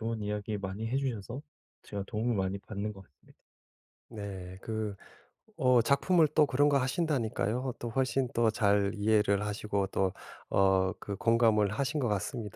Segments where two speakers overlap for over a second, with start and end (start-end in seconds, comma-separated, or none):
none